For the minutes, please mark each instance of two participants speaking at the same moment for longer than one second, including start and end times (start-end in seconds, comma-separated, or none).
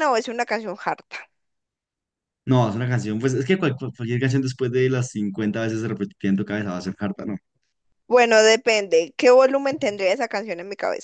none